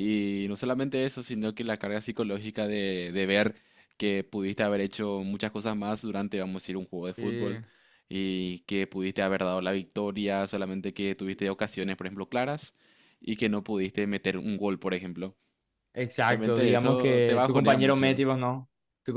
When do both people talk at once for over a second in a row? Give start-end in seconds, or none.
16.3-18.2